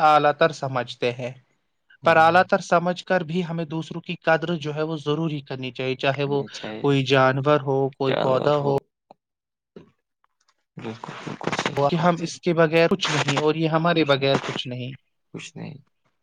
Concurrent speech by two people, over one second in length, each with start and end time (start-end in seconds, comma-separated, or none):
none